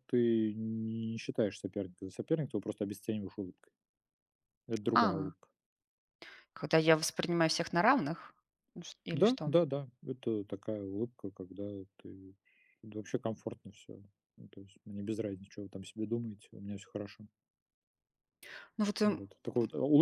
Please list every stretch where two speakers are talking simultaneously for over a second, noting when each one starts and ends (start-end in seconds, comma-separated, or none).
none